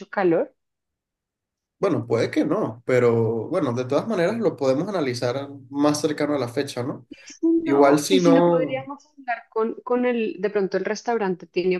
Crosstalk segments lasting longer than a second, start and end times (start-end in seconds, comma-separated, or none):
7.6-8.9